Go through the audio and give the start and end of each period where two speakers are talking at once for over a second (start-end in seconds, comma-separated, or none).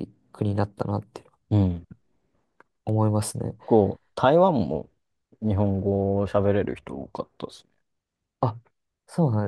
none